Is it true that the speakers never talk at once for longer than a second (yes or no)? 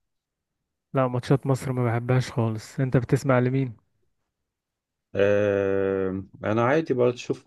yes